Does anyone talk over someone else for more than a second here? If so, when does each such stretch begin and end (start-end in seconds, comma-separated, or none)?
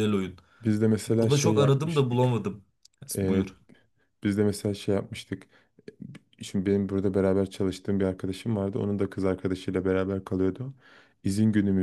1.2-2.5